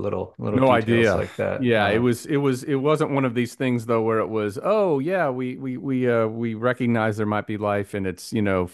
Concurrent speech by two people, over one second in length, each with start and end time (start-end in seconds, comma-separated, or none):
0.5-2.0